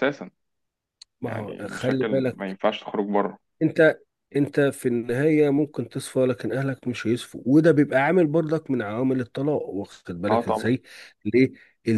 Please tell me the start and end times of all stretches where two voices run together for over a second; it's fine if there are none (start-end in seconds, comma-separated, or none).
1.2-2.6